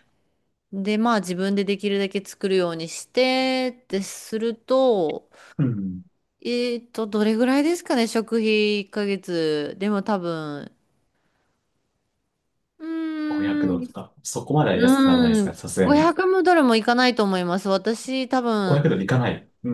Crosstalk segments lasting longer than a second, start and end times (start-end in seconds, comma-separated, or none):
14.7-16.1